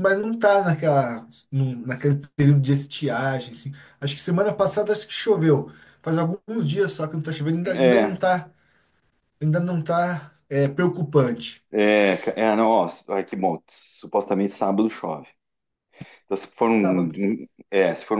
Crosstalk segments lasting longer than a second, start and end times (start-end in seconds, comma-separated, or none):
none